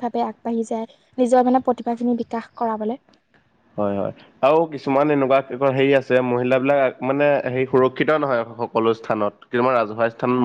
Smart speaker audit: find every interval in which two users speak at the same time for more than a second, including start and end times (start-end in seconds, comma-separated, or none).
none